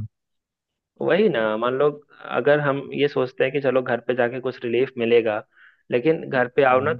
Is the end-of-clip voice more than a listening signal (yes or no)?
no